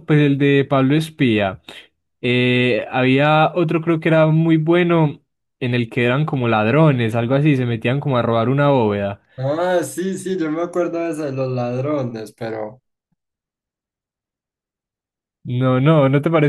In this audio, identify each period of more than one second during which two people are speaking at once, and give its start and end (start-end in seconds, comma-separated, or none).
none